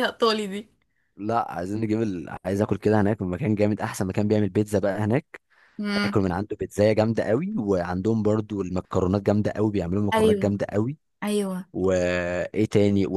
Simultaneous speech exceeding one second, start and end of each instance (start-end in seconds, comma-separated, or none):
none